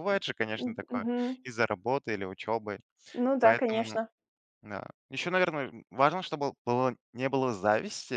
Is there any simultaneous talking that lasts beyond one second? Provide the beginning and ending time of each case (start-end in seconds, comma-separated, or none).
none